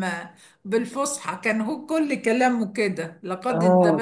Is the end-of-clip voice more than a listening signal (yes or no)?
yes